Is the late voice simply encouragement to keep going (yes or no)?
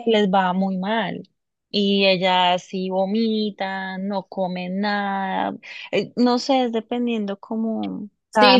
no